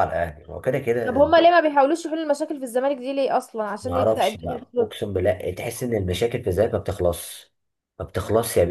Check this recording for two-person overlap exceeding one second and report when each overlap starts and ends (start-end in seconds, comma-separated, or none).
3.8-5.0